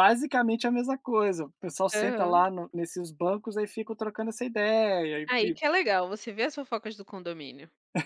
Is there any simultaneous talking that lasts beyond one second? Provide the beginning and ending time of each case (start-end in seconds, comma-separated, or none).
none